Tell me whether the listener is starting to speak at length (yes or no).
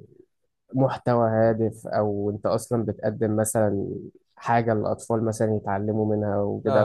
no